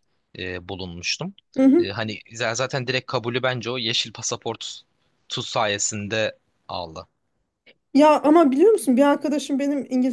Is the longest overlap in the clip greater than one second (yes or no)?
no